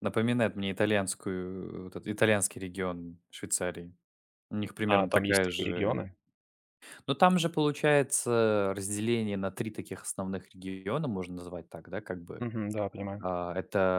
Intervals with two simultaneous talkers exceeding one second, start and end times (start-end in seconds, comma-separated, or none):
4.8-6.1